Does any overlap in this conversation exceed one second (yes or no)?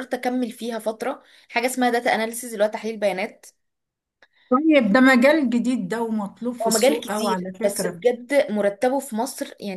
yes